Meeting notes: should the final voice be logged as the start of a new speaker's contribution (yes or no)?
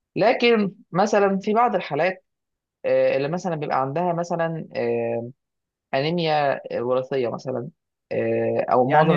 yes